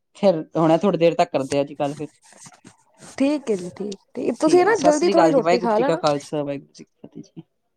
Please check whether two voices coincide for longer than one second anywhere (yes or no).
yes